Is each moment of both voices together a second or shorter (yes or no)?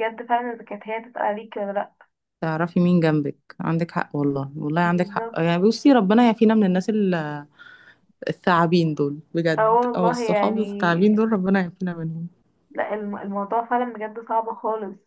no